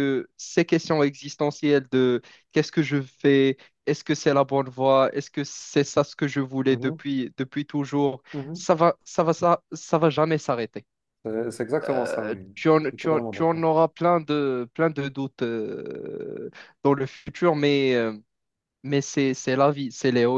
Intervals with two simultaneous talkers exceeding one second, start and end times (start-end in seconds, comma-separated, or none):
11.8-13.7